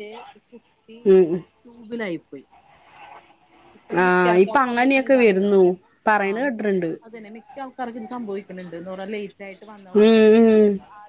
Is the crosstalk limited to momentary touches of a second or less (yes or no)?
no